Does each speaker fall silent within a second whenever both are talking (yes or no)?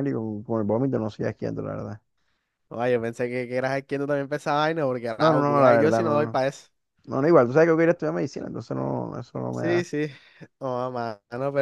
no